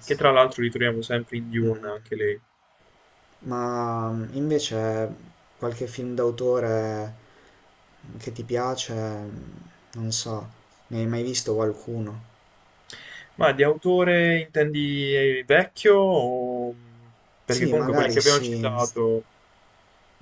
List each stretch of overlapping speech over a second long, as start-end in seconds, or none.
17.4-18.7